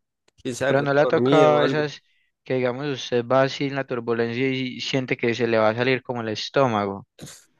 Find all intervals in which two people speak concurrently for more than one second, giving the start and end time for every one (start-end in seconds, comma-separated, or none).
0.7-1.9